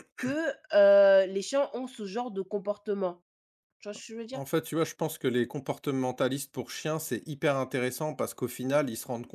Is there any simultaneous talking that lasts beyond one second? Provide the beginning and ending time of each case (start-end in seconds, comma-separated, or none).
none